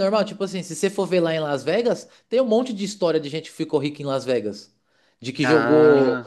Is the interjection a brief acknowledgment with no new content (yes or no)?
yes